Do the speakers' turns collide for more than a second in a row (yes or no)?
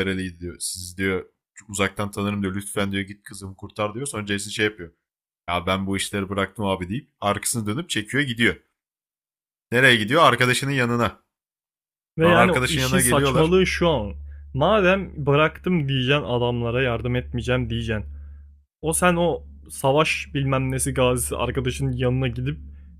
yes